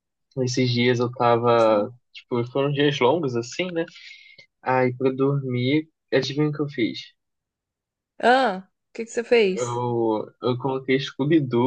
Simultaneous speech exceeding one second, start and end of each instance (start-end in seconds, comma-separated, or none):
none